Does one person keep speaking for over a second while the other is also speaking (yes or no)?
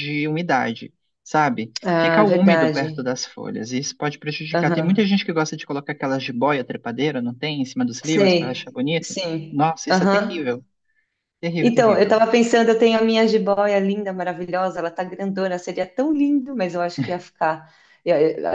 yes